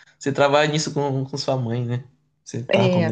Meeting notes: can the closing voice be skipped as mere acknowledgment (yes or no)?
no